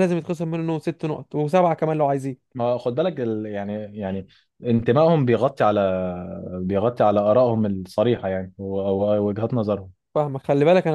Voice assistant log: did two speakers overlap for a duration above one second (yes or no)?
no